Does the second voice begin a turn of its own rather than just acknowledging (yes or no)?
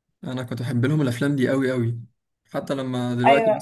no